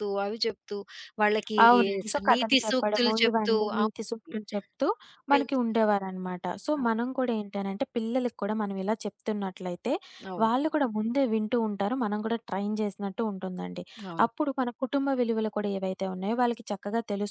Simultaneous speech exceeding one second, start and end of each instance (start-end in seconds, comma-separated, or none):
2.1-4.3